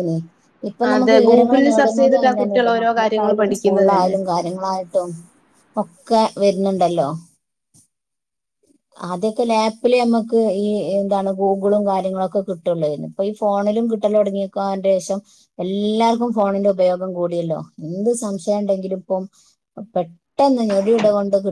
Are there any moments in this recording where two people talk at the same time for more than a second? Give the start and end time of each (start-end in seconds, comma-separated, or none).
0.9-4.2